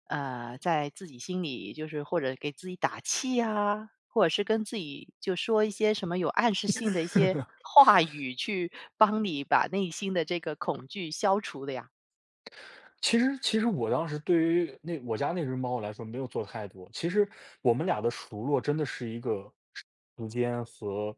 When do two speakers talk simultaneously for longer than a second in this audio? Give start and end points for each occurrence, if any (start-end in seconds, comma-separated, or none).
none